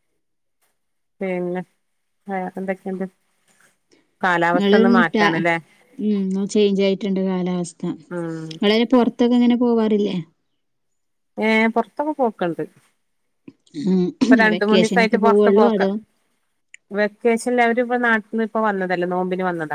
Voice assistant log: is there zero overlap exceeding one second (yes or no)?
no